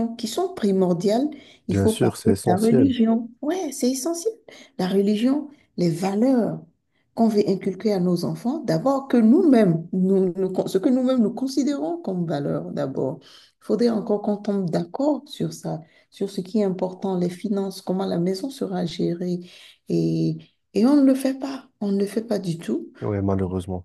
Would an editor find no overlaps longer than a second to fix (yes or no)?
no